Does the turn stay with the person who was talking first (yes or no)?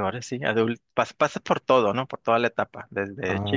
yes